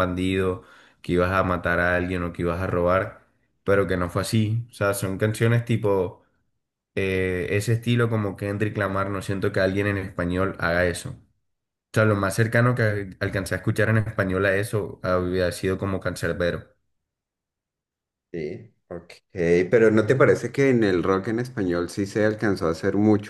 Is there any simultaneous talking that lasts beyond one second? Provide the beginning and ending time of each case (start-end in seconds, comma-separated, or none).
none